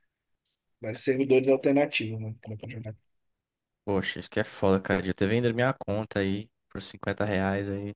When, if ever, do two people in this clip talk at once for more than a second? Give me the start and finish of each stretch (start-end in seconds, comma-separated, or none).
none